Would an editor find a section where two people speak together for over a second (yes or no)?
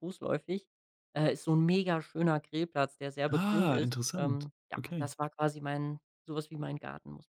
yes